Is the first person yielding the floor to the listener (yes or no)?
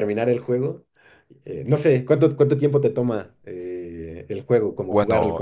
yes